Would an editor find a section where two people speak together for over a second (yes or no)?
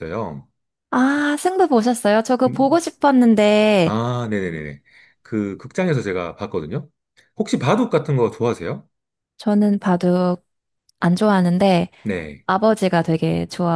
no